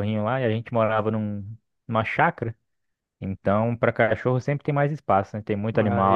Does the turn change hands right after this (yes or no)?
yes